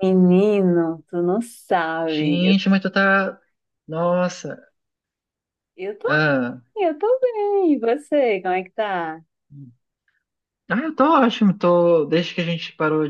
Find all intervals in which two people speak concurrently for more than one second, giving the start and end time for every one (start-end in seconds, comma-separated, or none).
none